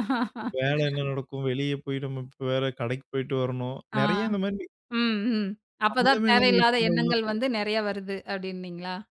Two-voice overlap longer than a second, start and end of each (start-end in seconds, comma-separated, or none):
5.9-7.2